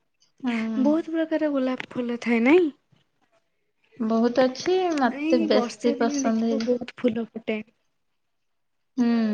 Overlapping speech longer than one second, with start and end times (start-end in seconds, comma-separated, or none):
5.2-6.7